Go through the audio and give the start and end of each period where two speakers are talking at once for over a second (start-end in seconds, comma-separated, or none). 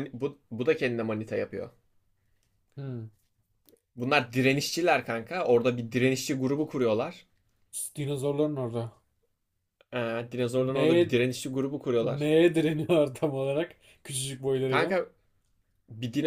none